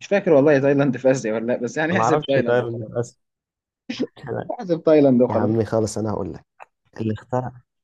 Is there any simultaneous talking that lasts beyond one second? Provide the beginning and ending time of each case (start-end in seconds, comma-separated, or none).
1.9-3.1